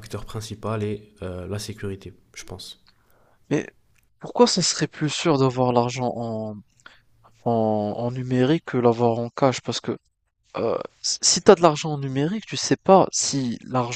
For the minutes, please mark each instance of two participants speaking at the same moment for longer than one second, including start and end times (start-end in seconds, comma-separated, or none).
none